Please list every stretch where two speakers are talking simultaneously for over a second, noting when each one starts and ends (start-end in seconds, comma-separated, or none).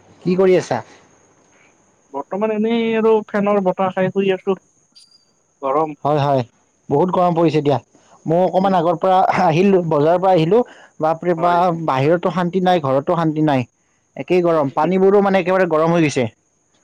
14.3-15.6